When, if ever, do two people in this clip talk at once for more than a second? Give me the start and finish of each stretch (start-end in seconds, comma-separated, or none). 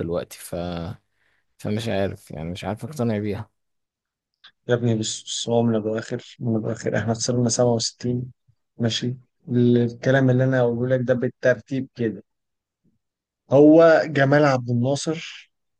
none